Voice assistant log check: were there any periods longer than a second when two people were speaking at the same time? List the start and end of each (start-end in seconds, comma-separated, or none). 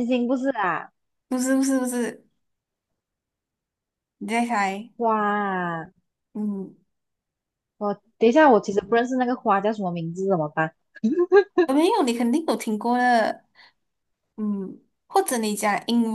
none